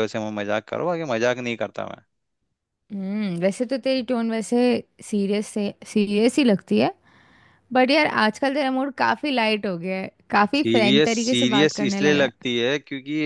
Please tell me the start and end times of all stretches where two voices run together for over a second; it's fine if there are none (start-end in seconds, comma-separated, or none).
10.5-12.3